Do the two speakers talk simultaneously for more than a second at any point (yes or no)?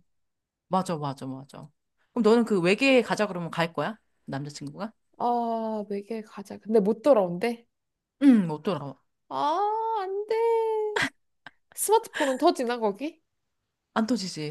no